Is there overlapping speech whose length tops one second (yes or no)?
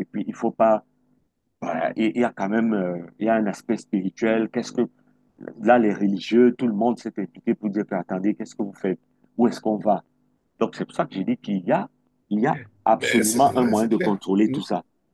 yes